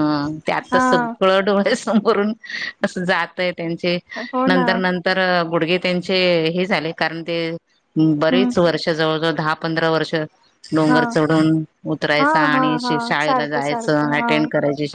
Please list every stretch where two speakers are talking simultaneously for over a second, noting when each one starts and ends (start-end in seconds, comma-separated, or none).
12.2-14.3